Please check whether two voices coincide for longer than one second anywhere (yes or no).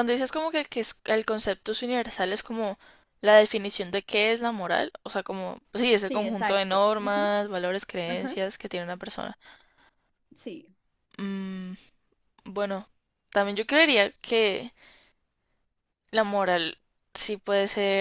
yes